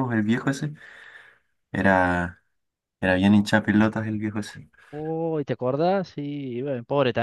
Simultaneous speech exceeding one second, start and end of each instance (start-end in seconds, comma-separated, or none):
none